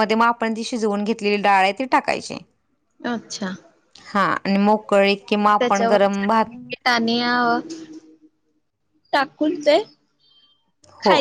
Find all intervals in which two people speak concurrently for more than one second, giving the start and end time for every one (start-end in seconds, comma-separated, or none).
none